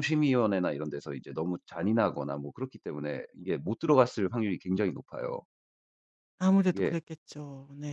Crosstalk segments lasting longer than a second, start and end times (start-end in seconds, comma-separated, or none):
none